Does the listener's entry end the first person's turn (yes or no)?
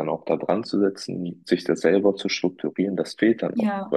no